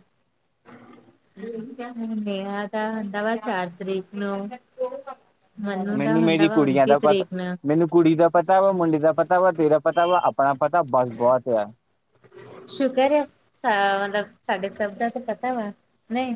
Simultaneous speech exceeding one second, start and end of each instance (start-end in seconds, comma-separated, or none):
6.0-7.2